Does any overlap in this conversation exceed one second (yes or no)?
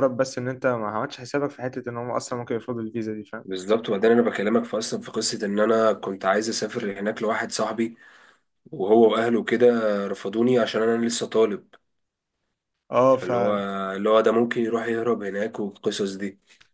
no